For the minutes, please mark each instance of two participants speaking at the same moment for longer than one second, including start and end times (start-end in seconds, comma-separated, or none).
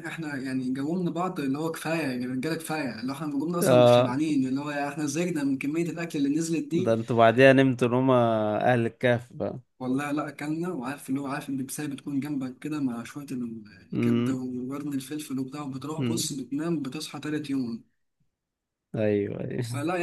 none